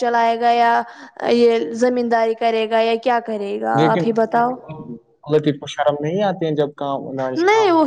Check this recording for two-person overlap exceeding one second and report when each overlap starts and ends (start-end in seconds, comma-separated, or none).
none